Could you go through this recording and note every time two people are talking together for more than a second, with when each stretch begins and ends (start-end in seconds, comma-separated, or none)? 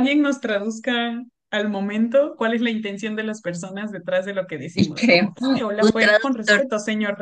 4.7-6.7